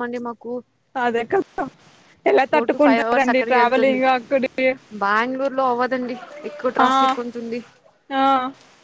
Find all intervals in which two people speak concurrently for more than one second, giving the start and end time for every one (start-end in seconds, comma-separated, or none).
2.5-4.0